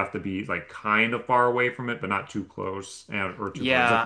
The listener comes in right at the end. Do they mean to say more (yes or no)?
yes